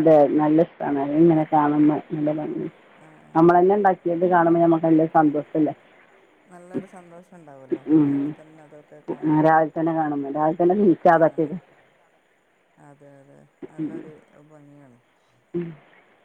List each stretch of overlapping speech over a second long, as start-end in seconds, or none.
none